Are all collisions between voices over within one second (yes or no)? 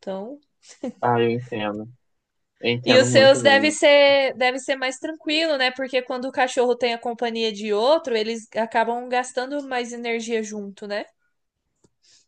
no